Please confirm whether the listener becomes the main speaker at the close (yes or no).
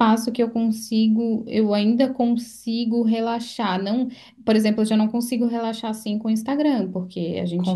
no